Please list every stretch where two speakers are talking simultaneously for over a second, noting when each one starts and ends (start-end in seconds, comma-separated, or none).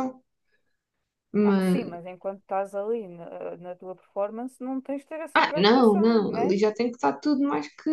5.3-6.5